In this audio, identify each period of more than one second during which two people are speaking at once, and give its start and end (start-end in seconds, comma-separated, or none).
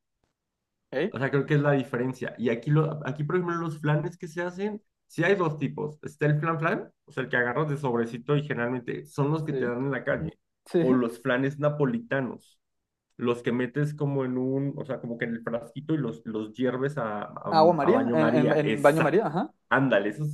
17.5-19.3